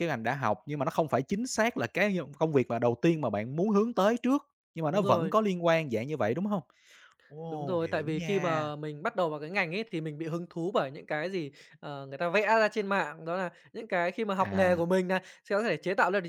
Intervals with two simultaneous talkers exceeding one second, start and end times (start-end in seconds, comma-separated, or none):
7.5-8.7